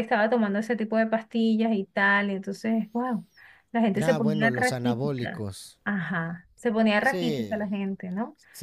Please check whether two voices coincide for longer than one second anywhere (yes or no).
yes